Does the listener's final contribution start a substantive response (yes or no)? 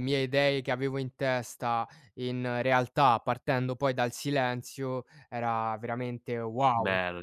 yes